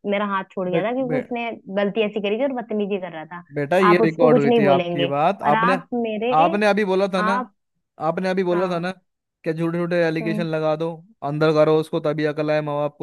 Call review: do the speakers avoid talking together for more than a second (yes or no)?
no